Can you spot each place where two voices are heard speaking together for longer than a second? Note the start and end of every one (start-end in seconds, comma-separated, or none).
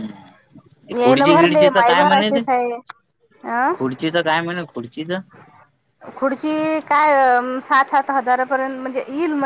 1.0-2.4